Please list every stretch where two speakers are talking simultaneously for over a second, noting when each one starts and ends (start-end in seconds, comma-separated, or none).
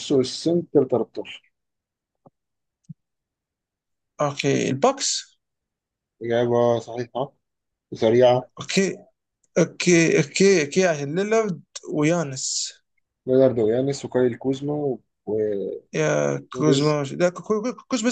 none